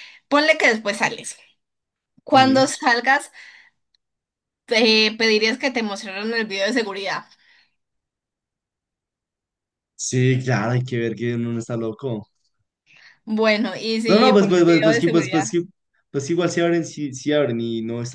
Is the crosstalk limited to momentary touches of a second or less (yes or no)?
no